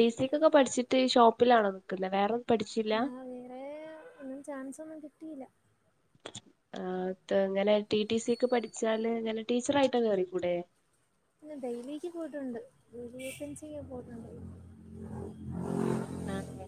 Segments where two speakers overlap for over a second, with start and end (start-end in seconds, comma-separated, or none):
none